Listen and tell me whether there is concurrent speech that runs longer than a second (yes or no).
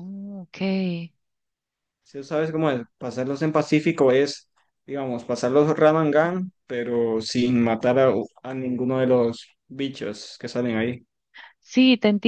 no